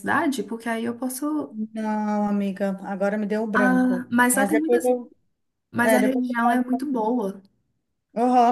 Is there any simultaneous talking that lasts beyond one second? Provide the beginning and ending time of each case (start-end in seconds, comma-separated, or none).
3.5-4.9